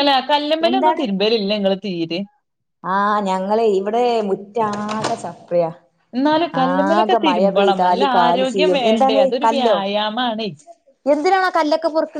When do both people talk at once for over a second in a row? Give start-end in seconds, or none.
6.7-9.8